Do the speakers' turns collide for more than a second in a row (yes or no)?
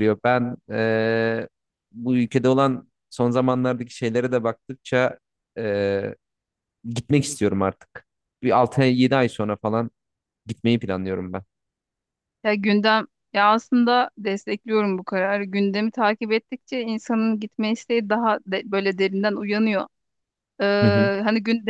no